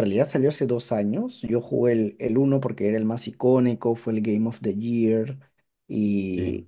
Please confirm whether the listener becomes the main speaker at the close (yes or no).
no